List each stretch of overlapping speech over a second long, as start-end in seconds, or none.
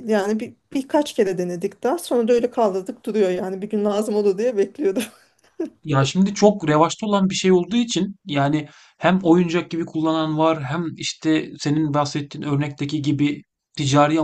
none